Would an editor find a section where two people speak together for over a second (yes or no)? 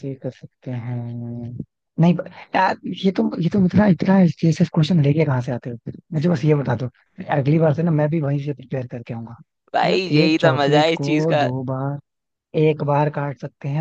yes